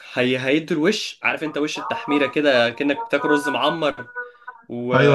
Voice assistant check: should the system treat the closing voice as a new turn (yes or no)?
yes